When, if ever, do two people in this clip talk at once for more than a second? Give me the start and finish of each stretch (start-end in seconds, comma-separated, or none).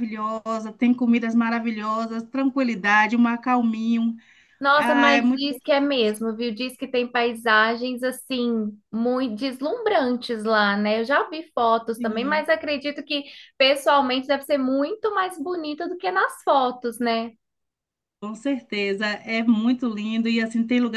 4.7-6.2